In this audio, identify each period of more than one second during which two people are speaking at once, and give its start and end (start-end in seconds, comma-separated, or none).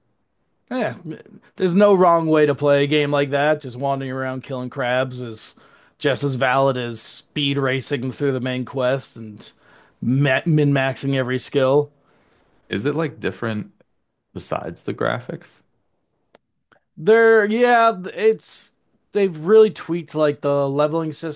none